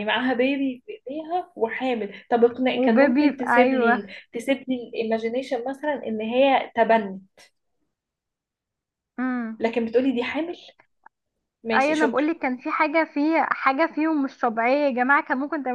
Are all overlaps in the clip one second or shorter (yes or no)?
no